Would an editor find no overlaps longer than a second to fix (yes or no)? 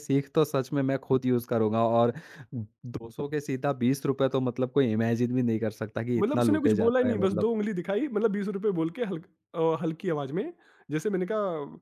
no